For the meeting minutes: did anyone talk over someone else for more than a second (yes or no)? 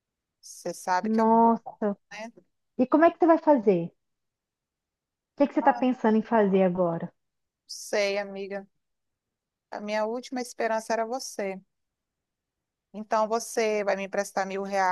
no